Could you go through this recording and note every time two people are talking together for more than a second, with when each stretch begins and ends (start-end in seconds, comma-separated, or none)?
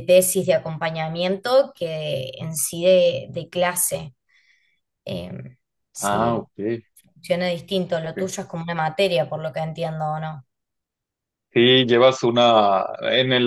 none